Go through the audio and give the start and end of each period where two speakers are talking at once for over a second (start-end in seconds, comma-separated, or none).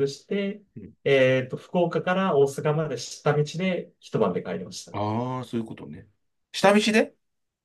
none